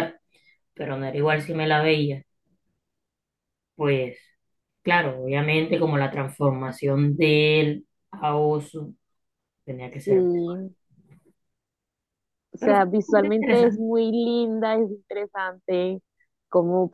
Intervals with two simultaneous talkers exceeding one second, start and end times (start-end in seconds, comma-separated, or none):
12.6-13.8